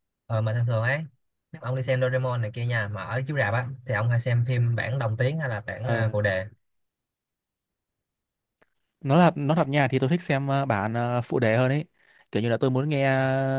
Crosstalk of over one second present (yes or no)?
no